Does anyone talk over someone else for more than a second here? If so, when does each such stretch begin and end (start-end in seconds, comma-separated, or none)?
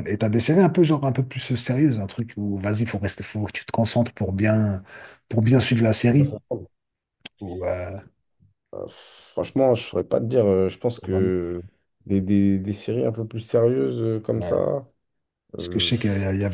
none